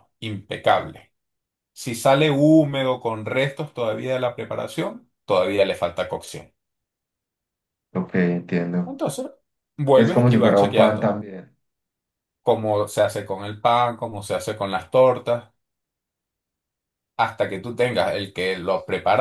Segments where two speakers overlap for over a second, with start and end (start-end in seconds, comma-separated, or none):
9.9-11.2